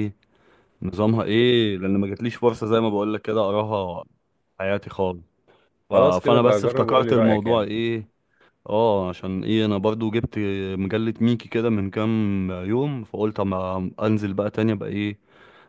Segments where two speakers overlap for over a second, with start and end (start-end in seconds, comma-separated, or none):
5.9-7.7